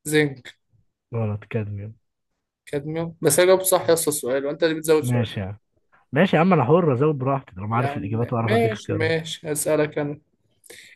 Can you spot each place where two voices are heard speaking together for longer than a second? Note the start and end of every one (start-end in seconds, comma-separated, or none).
7.7-9.1